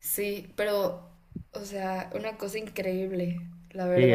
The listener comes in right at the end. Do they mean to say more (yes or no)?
yes